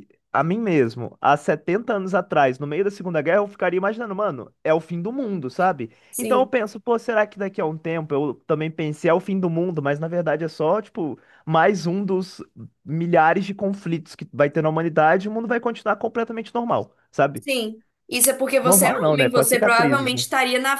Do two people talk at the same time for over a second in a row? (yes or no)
yes